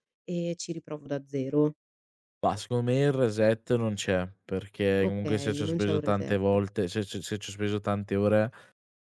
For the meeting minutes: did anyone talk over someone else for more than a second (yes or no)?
yes